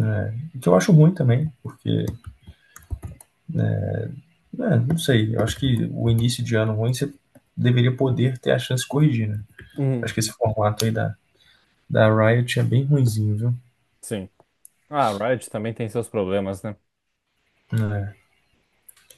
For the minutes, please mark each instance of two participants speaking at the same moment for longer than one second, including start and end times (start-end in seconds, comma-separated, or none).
none